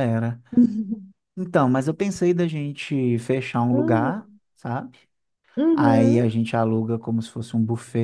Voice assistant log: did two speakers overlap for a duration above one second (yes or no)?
no